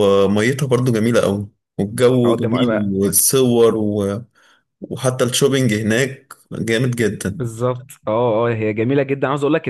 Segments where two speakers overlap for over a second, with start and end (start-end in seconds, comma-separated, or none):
none